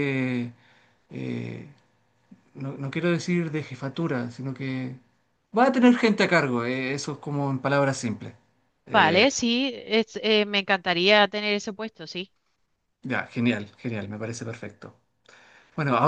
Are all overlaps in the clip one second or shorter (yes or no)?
yes